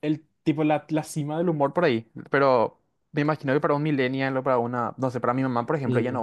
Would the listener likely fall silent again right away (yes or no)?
no